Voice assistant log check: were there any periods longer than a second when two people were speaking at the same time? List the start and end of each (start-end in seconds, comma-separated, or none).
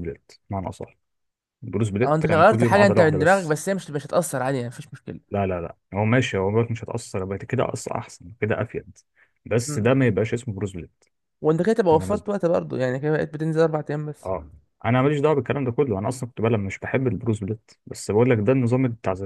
2.0-3.6